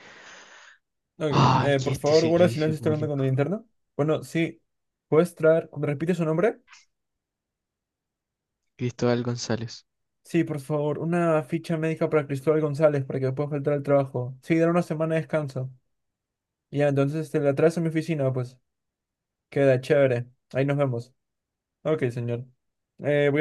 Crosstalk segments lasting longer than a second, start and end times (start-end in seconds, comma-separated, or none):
1.3-3.2